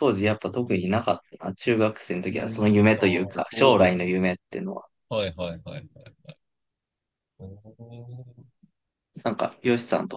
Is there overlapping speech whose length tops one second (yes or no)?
yes